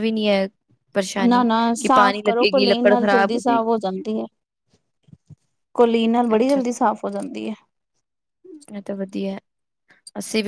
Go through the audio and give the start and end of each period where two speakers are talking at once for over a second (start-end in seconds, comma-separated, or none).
1.3-3.6